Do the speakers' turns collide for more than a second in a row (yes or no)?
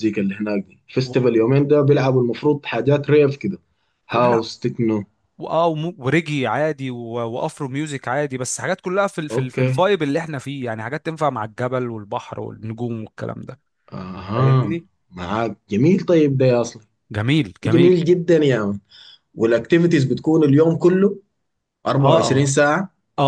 no